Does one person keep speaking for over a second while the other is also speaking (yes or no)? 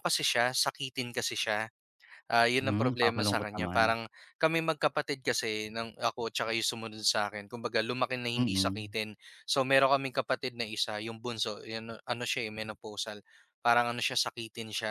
yes